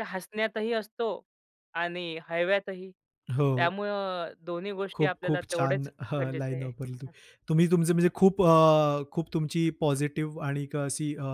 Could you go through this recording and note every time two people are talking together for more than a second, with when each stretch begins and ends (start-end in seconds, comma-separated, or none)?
5.0-7.1